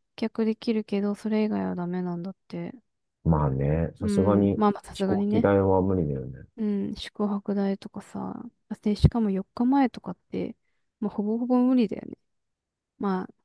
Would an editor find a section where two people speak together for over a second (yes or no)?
yes